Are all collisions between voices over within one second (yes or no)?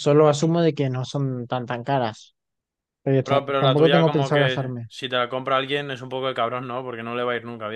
no